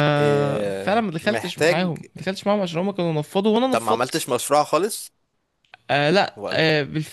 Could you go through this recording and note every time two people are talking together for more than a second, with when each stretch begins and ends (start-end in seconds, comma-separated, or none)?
0.7-1.9